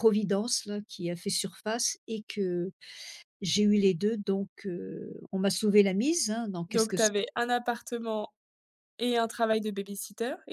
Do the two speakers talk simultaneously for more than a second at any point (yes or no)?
no